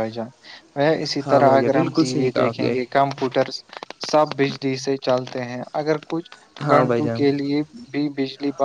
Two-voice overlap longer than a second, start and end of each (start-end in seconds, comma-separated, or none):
1.2-2.8